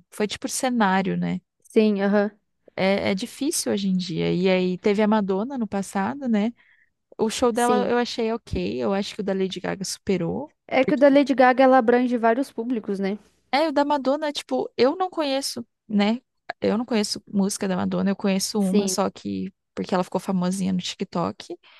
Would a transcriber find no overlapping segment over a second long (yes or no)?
yes